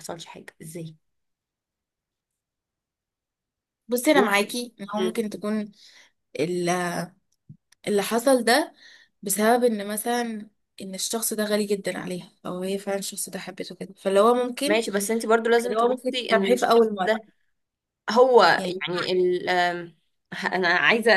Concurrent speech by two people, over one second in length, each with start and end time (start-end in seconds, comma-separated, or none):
15.6-17.2